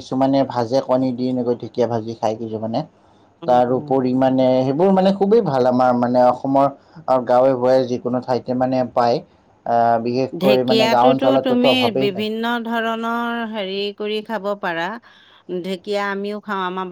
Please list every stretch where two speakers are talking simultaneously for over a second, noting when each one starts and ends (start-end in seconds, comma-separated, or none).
10.4-12.2